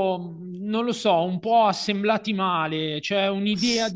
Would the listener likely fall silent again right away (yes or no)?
yes